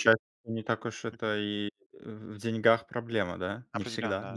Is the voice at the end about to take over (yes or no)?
yes